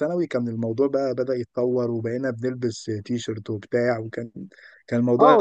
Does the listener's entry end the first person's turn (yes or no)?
yes